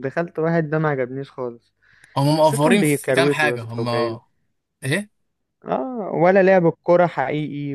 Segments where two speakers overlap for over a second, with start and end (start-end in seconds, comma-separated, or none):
2.3-3.8